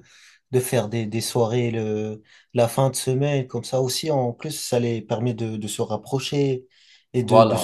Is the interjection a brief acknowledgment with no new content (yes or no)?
yes